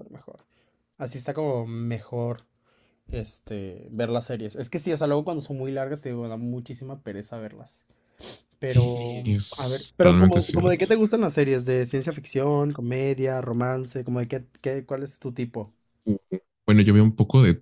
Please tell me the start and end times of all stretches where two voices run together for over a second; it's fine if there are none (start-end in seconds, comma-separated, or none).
8.6-10.8